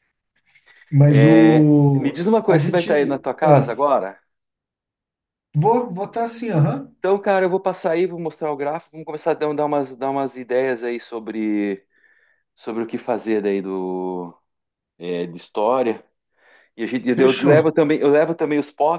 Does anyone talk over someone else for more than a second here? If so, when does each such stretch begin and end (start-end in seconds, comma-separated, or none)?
1.1-3.7